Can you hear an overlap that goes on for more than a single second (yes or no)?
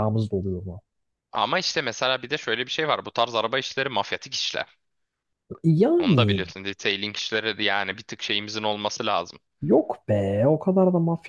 no